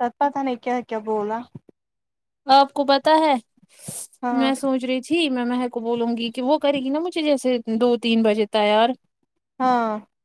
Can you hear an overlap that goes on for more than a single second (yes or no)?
no